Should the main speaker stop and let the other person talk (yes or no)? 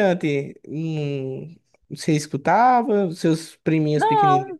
yes